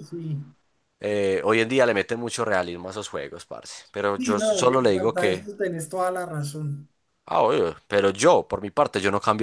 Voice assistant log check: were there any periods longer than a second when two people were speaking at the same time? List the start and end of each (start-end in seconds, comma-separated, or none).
4.2-5.4